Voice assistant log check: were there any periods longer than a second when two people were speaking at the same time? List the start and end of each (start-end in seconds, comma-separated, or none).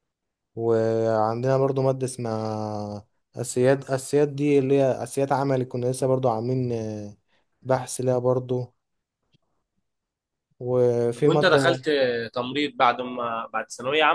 none